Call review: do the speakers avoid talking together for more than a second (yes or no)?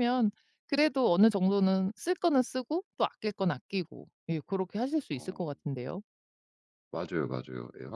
yes